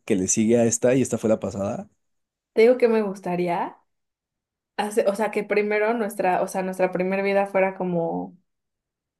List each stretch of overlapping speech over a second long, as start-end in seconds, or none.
none